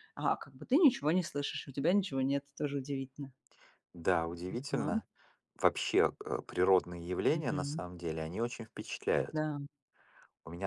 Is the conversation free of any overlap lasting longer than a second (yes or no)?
yes